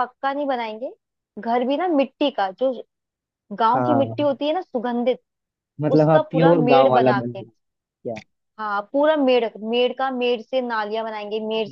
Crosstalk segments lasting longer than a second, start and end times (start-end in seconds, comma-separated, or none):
6.0-7.4